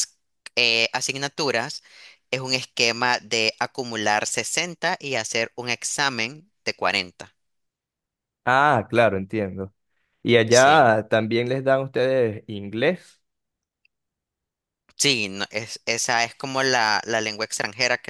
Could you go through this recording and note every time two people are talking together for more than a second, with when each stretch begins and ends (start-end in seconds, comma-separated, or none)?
none